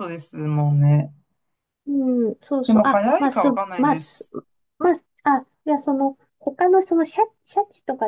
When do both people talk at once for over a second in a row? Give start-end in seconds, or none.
2.6-4.3